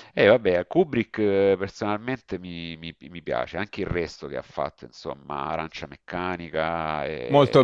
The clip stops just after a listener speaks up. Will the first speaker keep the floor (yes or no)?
no